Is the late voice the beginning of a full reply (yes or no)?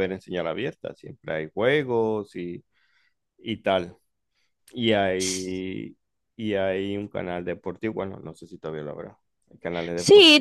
yes